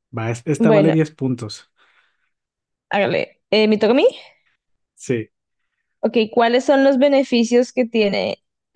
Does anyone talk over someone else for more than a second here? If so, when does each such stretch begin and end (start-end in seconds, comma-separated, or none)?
none